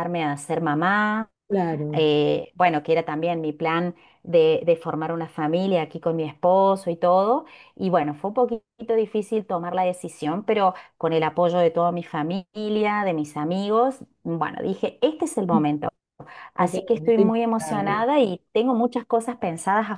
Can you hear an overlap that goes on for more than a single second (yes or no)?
yes